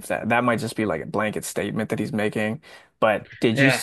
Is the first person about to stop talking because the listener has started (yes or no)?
no